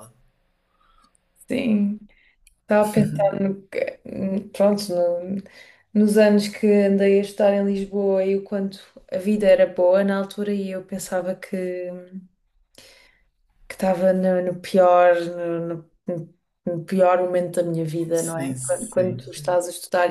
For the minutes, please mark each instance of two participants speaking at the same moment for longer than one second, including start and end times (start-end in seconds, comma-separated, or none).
18.1-19.6